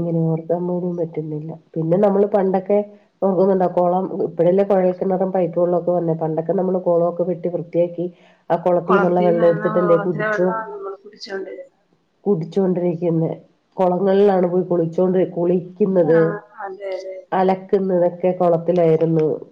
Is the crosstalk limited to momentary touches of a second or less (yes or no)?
no